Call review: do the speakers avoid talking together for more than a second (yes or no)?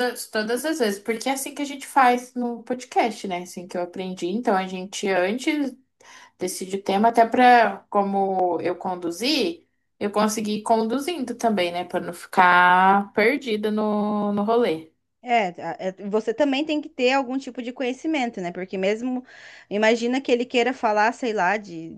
yes